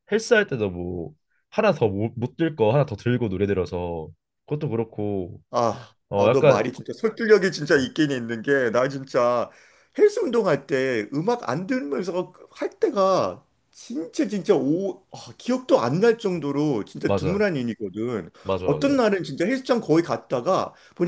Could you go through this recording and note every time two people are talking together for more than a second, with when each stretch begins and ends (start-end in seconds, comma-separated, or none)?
none